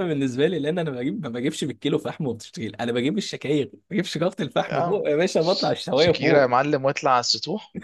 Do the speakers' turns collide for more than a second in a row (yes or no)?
yes